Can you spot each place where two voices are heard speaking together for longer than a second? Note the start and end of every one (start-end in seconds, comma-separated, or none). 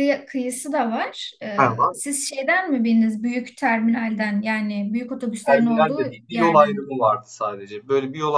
5.5-6.8